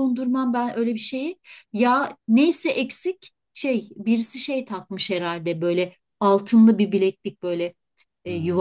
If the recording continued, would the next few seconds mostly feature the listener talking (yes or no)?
no